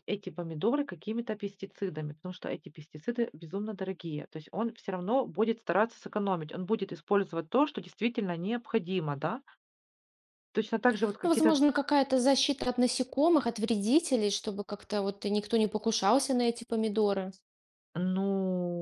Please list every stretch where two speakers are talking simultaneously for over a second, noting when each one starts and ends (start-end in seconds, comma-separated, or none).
none